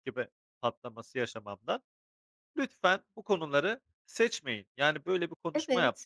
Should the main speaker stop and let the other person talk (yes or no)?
no